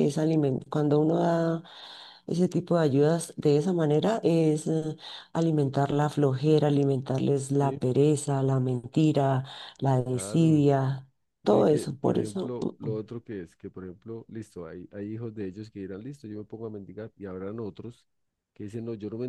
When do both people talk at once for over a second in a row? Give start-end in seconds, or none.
11.4-13.0